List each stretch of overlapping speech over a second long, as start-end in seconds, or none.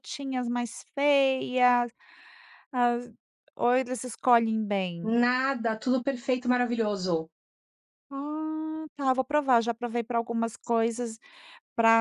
none